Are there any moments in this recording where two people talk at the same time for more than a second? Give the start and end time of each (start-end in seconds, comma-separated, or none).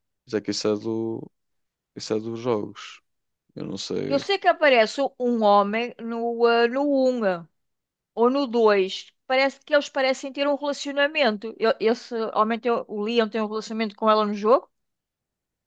none